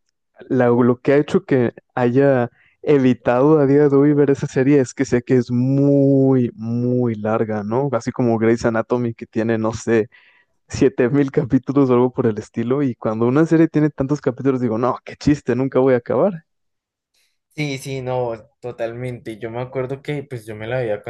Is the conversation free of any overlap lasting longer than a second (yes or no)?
yes